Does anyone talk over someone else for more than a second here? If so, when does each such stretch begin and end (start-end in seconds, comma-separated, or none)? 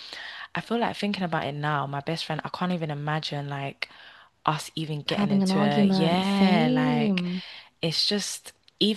5.1-7.2